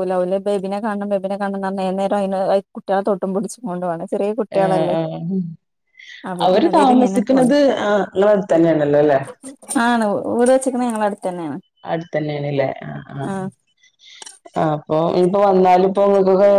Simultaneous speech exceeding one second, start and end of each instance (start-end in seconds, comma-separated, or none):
none